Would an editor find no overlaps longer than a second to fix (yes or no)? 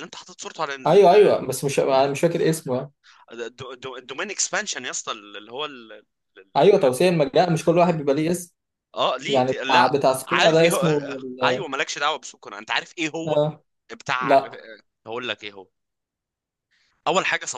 no